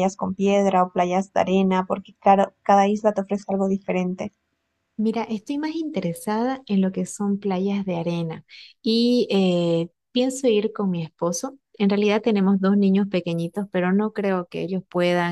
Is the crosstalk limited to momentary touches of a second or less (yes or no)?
yes